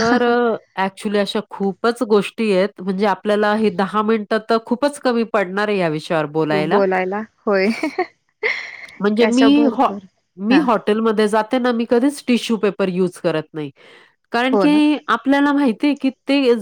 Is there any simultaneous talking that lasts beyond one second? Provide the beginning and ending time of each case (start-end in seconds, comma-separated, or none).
none